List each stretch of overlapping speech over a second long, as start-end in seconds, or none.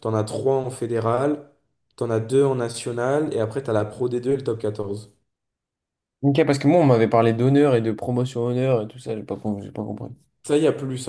none